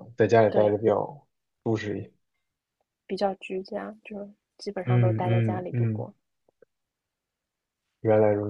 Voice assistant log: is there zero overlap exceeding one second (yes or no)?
no